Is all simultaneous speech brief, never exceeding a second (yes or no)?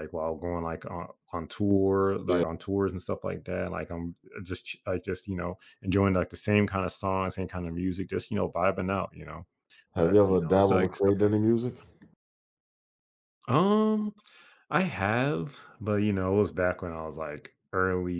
no